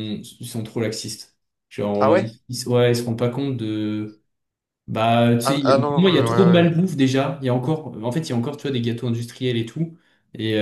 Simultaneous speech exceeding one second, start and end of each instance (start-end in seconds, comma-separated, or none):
5.4-6.7